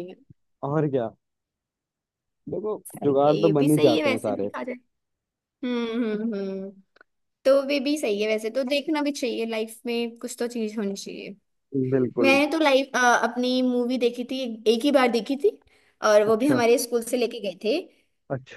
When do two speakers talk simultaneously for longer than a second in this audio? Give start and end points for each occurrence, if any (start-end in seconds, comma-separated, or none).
2.9-4.5